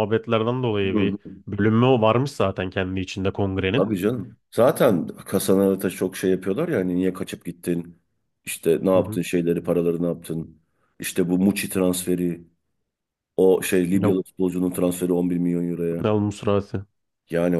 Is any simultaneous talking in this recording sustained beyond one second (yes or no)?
no